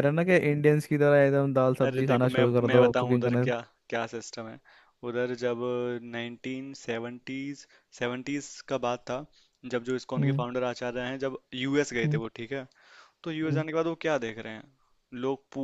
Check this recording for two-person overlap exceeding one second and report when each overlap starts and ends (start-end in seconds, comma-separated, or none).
1.8-3.5